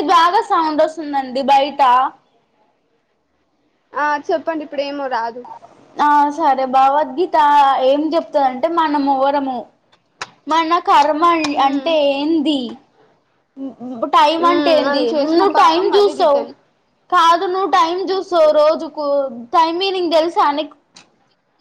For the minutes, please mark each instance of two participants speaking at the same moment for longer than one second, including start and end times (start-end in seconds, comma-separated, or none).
14.4-16.4